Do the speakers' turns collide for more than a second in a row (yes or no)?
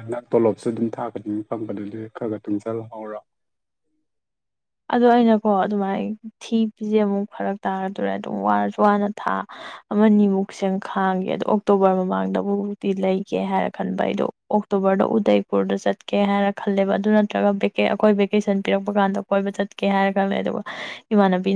no